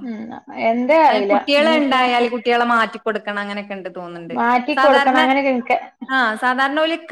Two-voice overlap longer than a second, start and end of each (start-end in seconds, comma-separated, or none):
none